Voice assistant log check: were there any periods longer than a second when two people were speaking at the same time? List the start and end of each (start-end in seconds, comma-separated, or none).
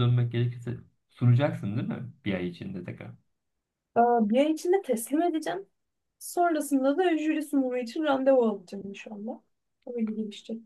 none